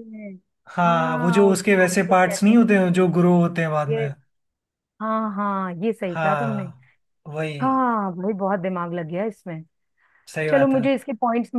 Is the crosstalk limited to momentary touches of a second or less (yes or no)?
no